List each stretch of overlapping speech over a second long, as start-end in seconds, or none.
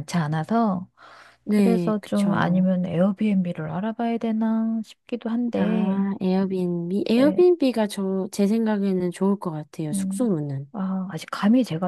1.5-2.7